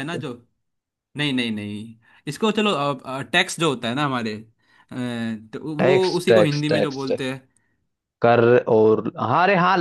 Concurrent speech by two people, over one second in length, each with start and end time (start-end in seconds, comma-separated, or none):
5.8-7.2